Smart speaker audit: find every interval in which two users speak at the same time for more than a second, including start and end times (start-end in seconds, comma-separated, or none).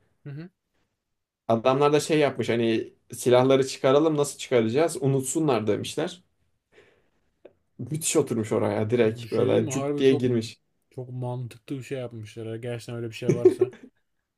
9.0-10.4